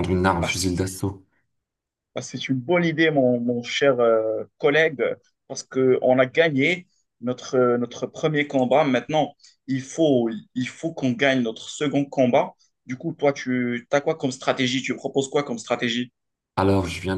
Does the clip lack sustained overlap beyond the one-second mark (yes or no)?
yes